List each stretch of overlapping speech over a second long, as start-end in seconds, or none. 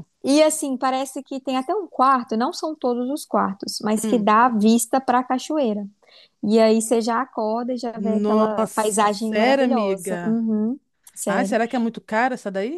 8.0-10.4